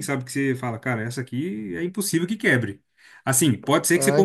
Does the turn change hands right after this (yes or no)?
no